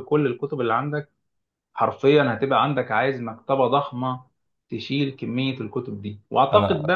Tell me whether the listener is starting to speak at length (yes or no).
no